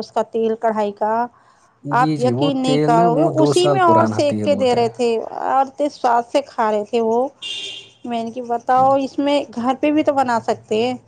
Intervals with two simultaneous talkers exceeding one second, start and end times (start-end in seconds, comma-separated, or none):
2.0-4.8